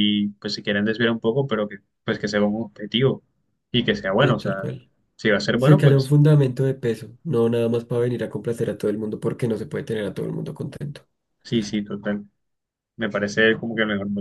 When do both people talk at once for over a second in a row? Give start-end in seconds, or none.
none